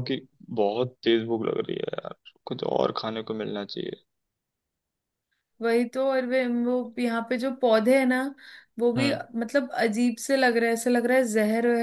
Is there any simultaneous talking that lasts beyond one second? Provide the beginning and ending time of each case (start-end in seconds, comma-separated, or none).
none